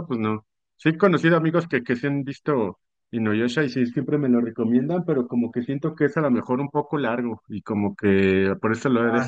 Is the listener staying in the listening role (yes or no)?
no